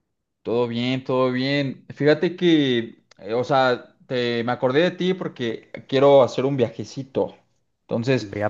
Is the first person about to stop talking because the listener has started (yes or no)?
no